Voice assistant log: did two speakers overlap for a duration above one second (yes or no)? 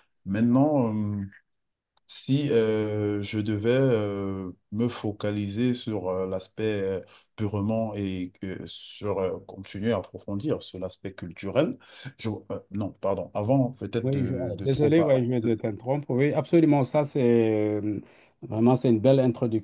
yes